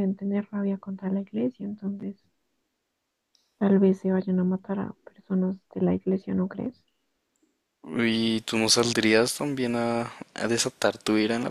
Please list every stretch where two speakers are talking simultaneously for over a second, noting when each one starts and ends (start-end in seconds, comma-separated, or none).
none